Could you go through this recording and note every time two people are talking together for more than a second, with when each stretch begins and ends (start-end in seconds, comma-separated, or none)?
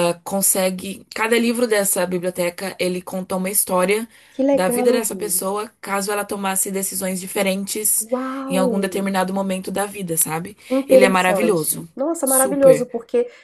10.6-12.9